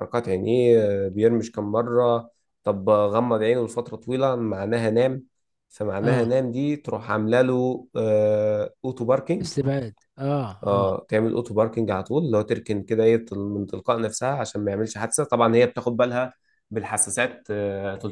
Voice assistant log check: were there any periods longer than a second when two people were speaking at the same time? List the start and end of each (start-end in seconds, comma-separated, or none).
none